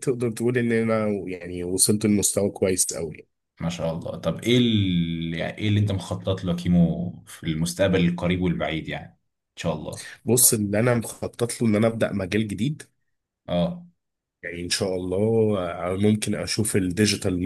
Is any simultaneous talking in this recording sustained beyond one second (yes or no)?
no